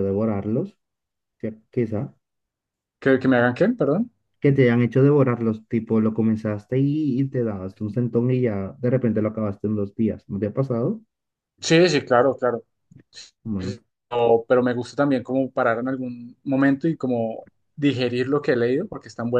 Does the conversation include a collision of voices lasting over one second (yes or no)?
no